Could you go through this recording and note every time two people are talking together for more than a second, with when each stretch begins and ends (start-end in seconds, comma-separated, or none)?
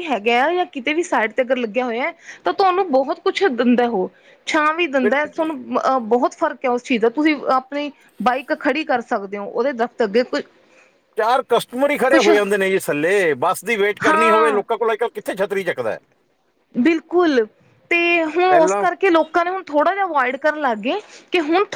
none